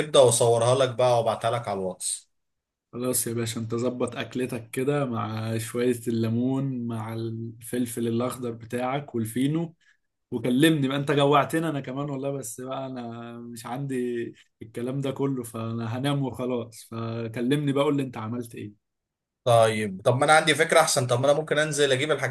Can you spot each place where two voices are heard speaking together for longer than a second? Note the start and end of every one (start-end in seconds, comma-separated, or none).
none